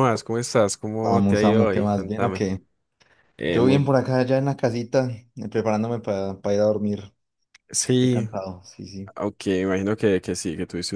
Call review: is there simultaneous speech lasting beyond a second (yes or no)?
yes